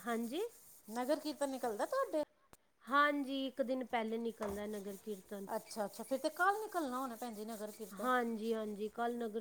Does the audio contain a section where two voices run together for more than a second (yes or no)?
no